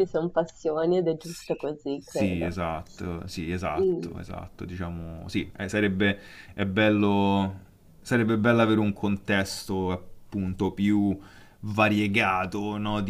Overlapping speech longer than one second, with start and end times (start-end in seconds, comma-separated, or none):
1.2-2.6